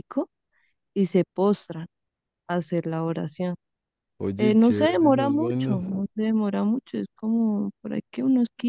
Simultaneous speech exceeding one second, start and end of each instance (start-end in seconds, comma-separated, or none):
4.4-5.8